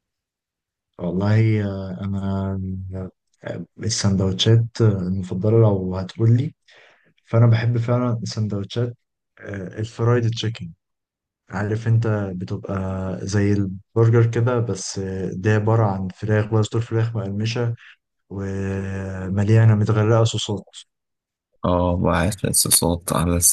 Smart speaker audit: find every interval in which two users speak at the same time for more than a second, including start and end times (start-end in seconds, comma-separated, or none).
none